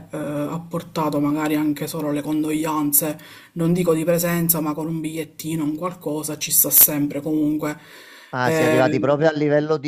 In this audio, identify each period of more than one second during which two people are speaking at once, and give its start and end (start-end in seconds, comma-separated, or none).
none